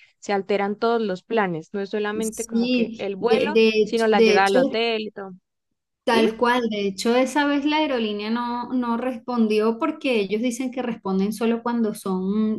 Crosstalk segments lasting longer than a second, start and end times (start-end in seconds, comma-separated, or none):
2.2-4.8